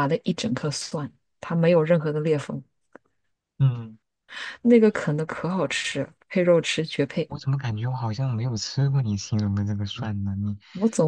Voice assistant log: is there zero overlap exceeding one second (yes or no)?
yes